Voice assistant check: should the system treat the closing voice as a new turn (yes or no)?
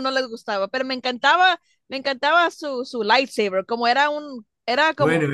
yes